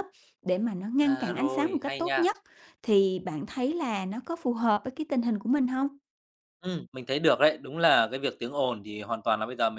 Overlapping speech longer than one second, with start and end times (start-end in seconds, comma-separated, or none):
1.0-2.2